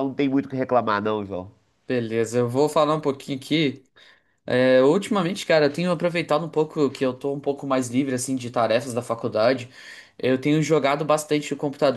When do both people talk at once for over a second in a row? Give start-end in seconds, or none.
none